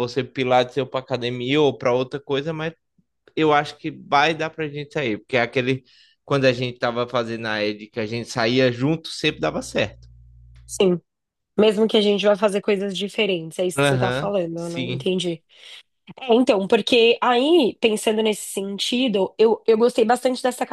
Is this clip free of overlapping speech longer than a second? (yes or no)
no